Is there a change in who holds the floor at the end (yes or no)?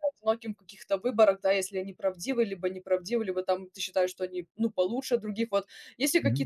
no